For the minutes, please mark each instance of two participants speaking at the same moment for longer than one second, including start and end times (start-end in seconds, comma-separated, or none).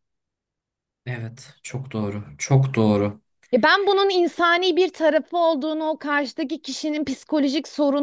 none